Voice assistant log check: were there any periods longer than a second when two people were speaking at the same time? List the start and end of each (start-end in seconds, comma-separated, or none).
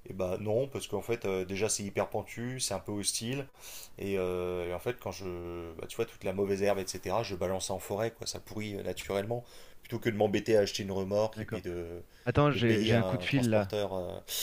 12.5-13.8